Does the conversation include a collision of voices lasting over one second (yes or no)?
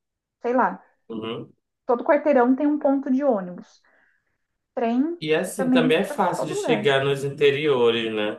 yes